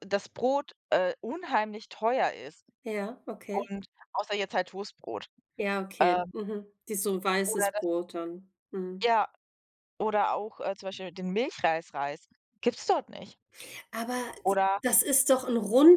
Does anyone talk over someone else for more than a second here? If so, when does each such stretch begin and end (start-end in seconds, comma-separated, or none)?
none